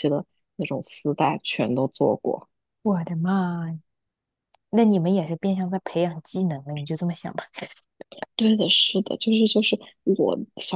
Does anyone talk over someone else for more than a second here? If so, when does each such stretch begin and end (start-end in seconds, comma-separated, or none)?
none